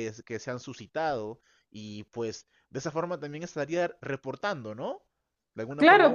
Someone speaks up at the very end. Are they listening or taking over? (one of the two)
taking over